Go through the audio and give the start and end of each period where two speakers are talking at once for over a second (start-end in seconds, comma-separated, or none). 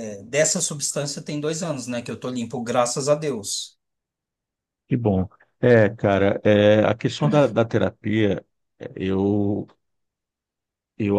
none